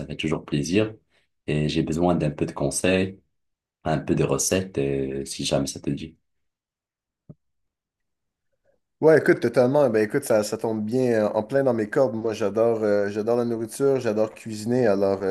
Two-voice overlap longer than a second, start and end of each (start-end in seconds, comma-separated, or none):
none